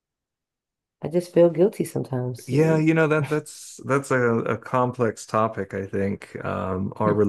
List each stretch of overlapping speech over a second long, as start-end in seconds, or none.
none